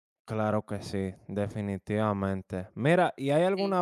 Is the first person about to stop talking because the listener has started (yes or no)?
no